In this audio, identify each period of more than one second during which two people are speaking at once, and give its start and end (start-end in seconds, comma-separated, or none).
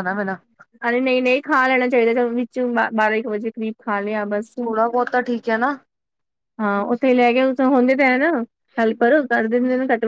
none